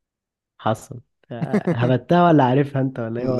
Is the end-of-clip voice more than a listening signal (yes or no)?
yes